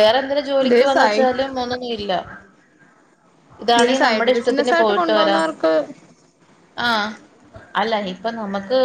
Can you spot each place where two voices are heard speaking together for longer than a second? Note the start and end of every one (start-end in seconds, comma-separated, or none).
3.7-5.4